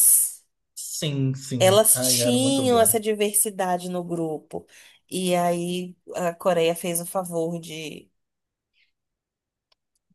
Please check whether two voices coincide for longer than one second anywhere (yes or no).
yes